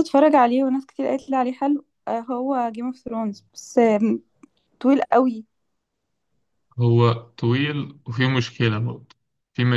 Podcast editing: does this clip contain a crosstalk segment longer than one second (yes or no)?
no